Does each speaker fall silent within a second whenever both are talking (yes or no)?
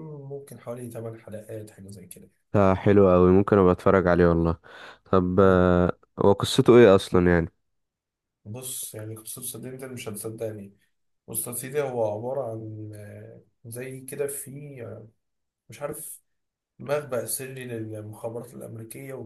yes